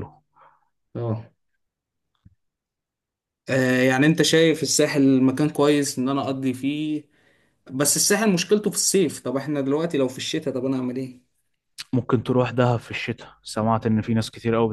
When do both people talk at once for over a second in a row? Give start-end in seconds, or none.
none